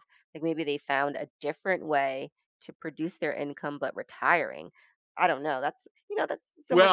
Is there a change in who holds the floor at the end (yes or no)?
yes